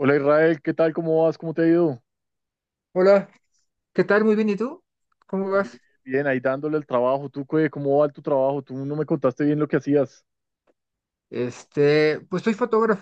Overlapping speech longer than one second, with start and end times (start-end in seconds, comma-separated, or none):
none